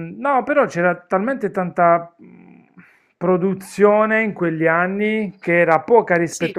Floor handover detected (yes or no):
no